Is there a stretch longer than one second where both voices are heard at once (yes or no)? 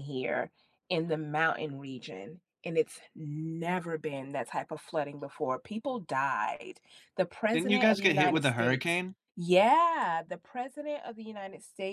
yes